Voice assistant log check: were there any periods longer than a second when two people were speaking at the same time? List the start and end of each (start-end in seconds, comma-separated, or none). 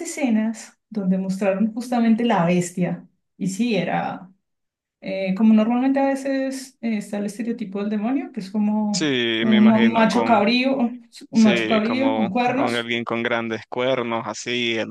8.9-10.4, 11.3-12.9